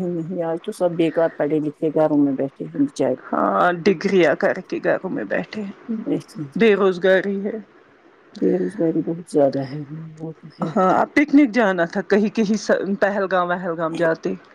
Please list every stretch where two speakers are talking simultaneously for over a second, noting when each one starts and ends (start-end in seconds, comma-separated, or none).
none